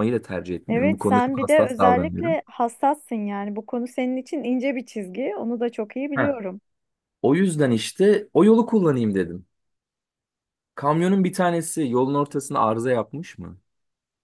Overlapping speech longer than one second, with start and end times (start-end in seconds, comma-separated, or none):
0.7-2.4